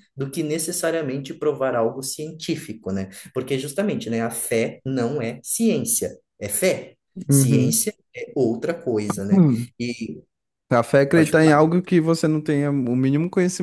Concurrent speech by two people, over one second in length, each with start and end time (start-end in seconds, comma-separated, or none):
none